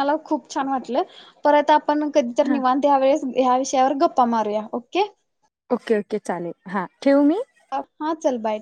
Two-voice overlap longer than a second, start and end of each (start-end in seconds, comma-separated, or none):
none